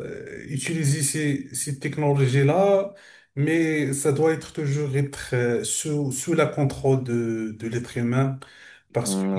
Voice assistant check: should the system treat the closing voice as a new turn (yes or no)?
yes